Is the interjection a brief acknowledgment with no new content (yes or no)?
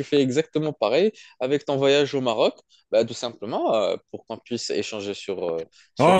no